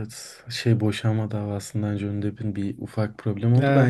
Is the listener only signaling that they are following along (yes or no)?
yes